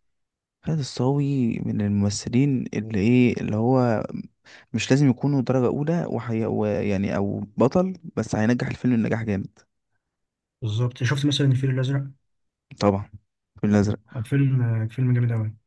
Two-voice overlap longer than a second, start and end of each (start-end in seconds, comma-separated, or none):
none